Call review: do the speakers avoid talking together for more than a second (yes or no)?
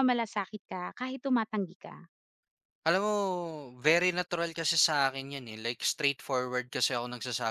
yes